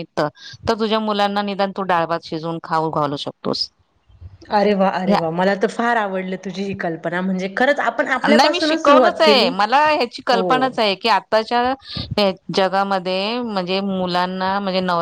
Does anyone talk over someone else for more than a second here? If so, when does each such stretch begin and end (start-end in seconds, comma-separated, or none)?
8.3-9.5